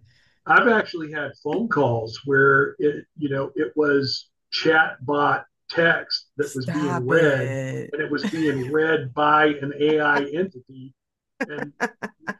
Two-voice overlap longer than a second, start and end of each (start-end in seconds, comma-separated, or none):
6.4-8.0